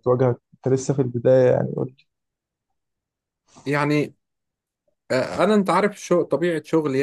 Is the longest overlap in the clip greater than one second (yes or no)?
no